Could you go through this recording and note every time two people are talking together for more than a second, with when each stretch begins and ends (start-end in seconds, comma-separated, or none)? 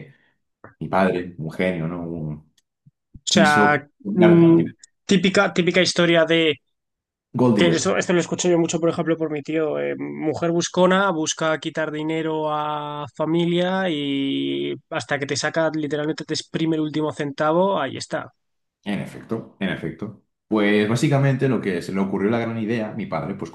none